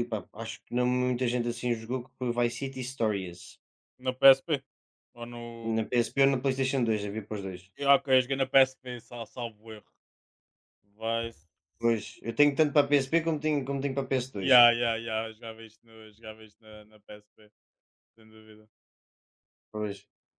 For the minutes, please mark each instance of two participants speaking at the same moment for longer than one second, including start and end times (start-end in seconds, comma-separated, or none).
none